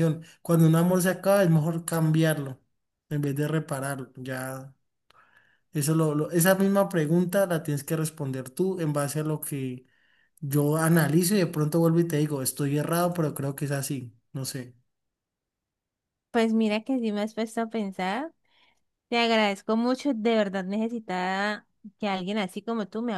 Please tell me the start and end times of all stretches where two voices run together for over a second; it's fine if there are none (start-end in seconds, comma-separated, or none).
none